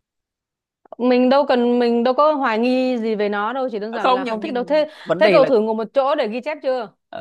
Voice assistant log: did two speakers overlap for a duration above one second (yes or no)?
yes